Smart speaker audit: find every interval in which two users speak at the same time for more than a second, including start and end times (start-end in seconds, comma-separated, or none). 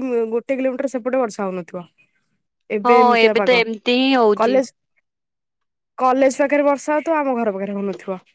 none